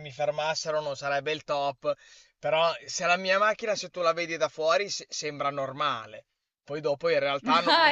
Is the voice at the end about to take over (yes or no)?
yes